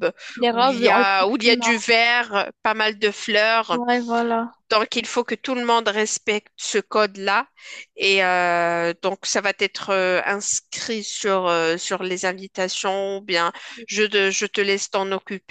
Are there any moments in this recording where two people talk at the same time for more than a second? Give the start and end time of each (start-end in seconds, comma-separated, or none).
0.5-1.7